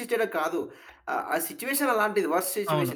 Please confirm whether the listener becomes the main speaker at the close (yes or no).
no